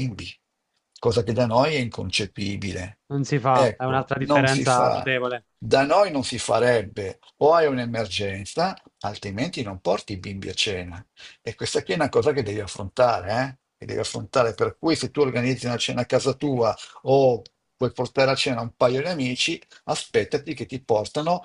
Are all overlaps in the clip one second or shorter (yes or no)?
no